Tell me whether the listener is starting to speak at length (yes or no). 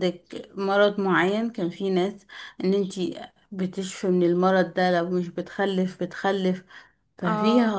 no